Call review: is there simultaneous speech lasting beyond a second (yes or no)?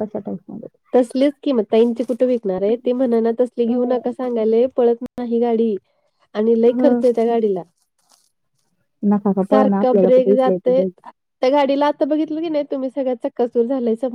yes